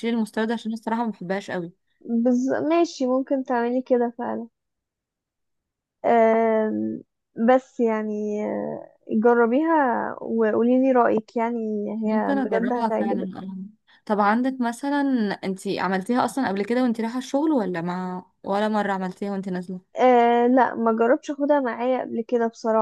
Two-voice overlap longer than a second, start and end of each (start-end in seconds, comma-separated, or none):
12.0-13.3